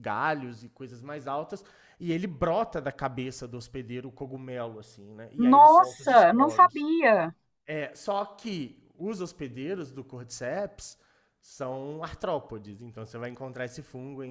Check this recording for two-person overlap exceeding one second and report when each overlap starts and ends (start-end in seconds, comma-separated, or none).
5.4-6.9